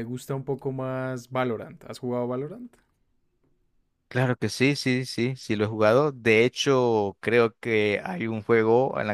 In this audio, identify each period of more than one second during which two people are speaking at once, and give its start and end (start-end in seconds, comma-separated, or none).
none